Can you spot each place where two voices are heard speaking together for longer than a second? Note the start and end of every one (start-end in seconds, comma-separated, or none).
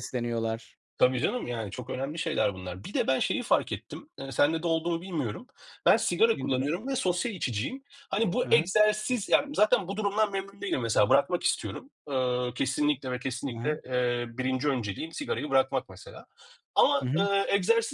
none